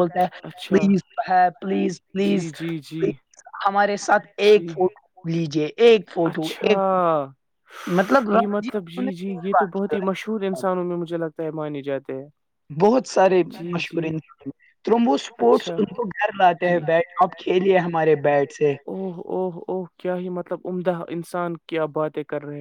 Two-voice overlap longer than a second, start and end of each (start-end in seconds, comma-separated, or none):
none